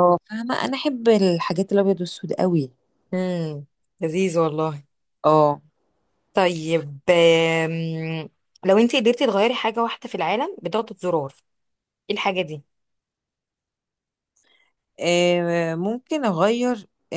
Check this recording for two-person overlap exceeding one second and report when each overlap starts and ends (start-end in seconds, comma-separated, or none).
none